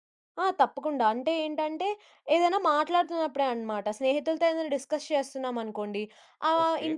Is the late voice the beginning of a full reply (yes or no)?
no